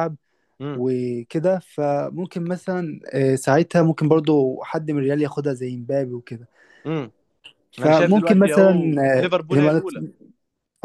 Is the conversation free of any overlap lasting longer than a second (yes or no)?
no